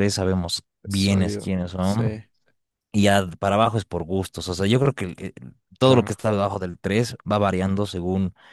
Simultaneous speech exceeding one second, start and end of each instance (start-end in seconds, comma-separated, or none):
0.8-2.2